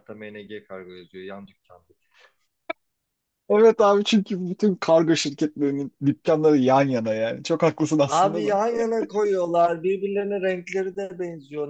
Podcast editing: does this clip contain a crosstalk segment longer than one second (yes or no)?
no